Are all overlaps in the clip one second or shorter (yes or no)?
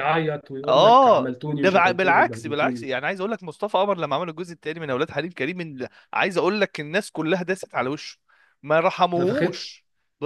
no